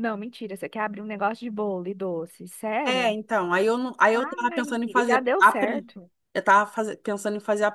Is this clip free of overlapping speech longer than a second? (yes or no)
no